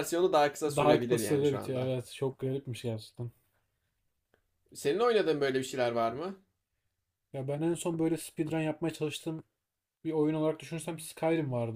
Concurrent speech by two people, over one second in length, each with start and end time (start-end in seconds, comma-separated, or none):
0.7-1.9